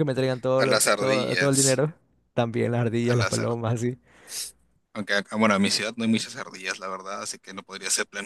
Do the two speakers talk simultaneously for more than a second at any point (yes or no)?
yes